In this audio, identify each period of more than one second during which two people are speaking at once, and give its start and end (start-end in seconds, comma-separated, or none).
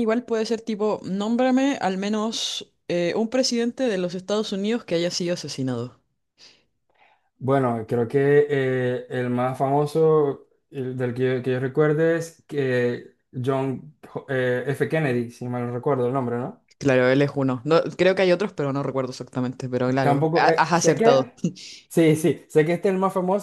20.0-21.3